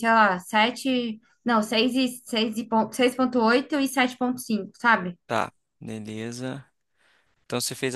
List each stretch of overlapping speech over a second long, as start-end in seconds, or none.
none